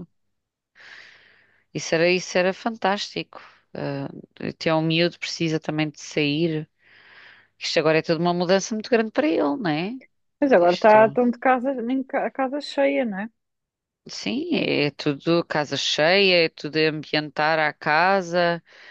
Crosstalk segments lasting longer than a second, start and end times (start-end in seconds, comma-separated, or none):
none